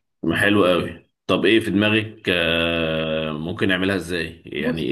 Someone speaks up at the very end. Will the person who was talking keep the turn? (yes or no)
no